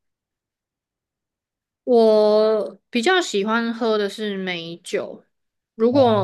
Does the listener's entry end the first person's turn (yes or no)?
no